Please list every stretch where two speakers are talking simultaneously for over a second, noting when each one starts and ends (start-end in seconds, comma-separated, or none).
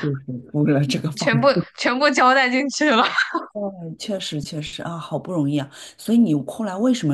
none